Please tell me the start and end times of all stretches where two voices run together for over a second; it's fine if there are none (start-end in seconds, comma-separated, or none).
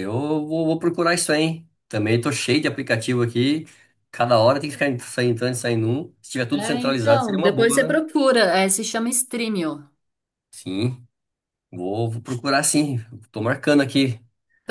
6.5-8.0